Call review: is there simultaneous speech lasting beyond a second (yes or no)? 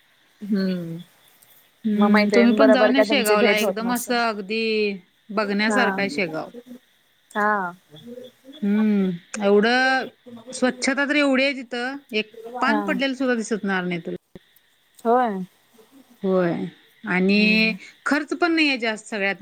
yes